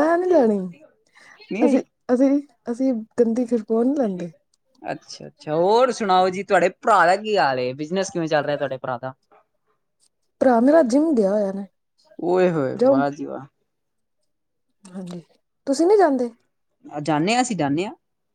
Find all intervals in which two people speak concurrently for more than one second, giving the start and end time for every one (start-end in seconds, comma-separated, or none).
none